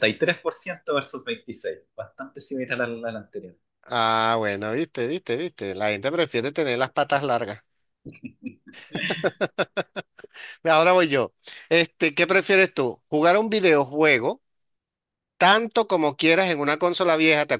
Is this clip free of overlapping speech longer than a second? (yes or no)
yes